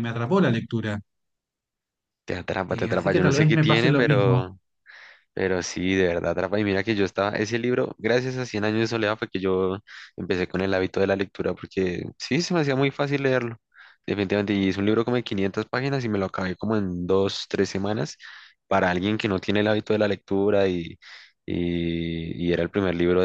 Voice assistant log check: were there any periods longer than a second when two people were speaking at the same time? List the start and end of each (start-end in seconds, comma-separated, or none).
2.7-4.5